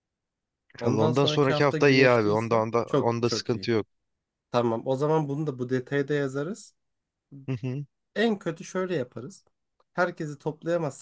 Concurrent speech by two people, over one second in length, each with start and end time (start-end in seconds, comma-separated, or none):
0.8-3.7